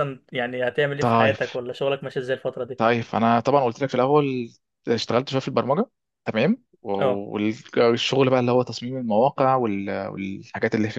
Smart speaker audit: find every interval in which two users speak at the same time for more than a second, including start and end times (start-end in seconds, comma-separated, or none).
none